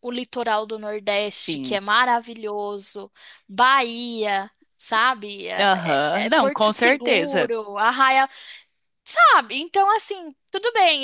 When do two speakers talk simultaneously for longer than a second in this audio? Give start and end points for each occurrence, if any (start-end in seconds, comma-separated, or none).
5.6-7.5